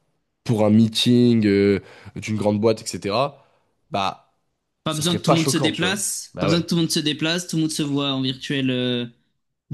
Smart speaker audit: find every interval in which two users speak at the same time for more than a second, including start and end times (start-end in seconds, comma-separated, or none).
4.9-6.6